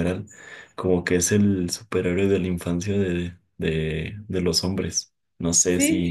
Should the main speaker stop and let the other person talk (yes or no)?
yes